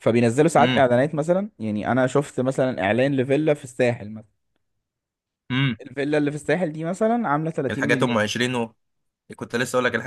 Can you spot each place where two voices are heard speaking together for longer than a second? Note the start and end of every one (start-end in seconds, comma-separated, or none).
none